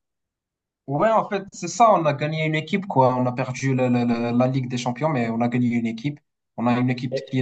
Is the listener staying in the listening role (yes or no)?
yes